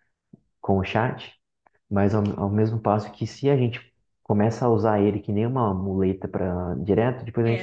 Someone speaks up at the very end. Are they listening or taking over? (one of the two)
taking over